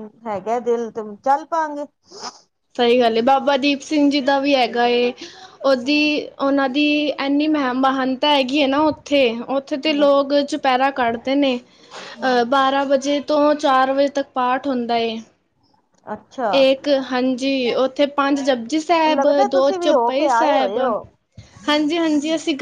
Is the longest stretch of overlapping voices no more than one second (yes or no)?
no